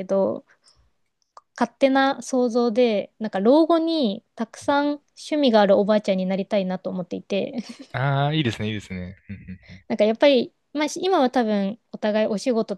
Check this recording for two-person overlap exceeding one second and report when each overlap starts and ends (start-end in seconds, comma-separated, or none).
none